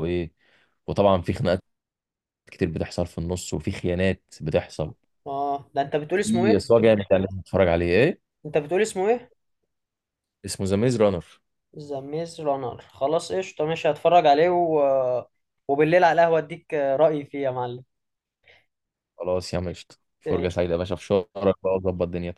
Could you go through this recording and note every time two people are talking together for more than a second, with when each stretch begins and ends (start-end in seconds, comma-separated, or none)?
none